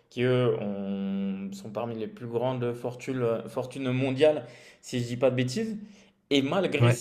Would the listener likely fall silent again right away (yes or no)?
yes